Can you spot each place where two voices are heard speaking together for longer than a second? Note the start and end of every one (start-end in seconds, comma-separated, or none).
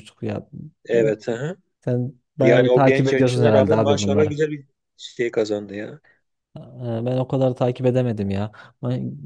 2.4-4.4